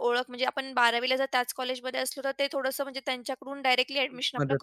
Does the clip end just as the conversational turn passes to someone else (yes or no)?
yes